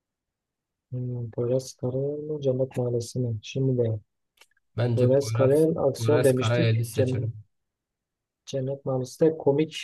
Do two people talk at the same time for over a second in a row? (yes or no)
yes